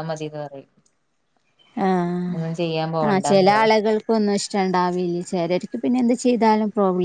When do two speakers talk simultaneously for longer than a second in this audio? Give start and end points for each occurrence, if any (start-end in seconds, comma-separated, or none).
none